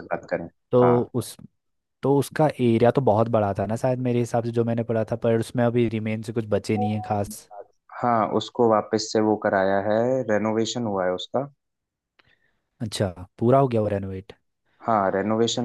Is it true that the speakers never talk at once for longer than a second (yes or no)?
yes